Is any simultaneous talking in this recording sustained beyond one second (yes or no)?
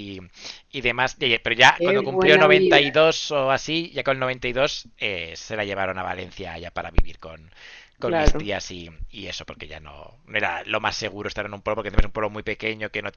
yes